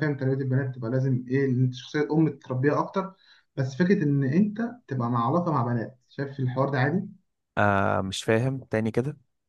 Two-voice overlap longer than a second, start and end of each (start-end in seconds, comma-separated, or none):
none